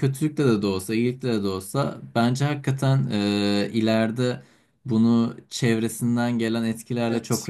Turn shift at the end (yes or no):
no